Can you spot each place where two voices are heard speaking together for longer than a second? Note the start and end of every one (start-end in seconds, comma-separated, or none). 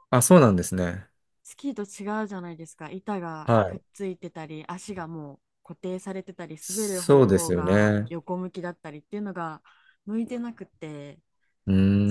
6.6-8.1